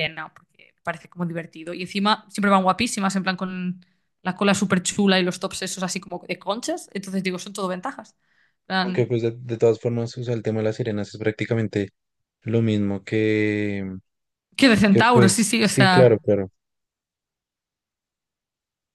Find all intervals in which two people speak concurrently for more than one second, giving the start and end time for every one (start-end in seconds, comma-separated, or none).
14.9-16.2